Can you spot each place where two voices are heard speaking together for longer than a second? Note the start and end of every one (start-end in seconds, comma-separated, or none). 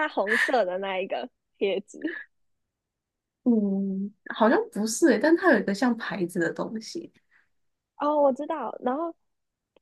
none